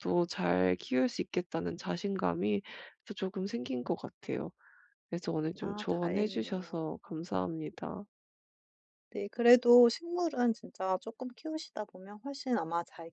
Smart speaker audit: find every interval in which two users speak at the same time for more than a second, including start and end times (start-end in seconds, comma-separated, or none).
5.6-6.9